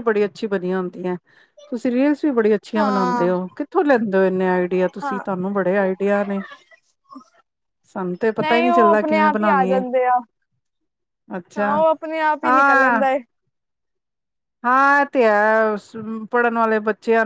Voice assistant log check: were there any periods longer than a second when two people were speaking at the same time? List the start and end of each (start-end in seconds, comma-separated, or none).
8.4-9.8